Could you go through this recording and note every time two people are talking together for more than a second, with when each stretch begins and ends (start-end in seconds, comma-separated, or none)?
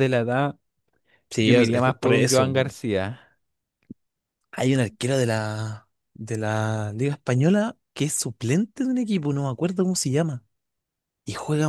1.4-2.8